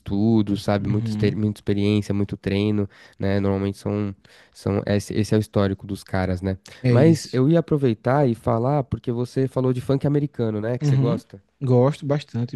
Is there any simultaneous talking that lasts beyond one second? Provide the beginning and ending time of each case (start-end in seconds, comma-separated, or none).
none